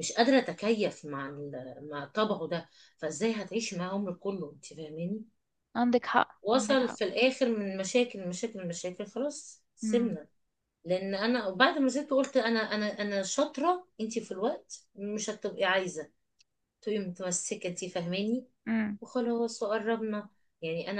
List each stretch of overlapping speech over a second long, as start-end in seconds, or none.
none